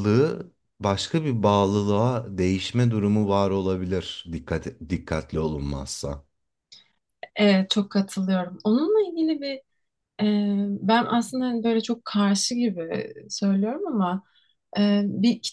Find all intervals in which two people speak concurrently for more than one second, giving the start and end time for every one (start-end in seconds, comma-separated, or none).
none